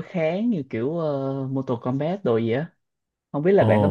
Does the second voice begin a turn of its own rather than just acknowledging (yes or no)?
yes